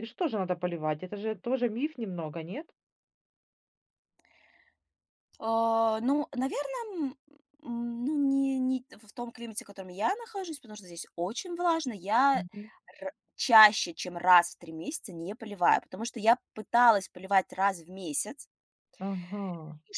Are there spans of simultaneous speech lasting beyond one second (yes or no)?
no